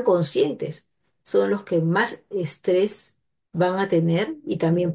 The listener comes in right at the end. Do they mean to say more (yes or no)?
no